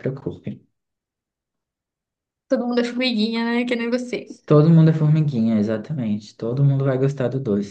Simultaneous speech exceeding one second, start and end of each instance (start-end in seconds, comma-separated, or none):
none